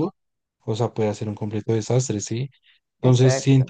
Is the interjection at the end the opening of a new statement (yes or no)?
yes